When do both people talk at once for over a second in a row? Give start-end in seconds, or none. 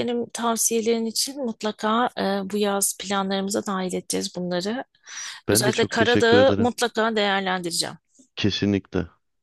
5.5-6.7